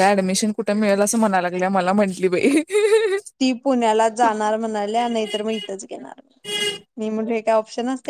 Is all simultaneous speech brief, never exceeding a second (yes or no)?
yes